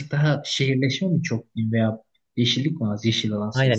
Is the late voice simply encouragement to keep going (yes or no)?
no